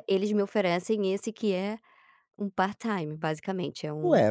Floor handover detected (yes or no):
yes